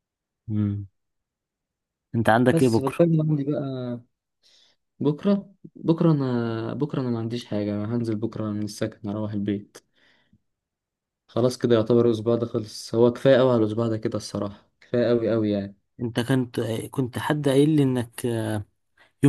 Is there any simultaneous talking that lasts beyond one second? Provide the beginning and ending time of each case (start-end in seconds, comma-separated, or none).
none